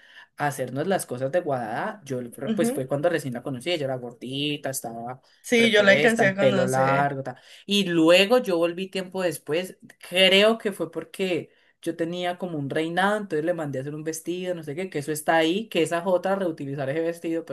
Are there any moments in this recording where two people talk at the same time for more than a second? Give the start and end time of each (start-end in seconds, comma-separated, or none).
5.6-7.1